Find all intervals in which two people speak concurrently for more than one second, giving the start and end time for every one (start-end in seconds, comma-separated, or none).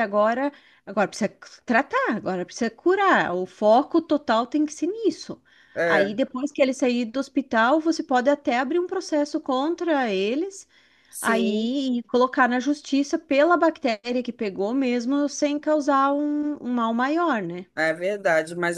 none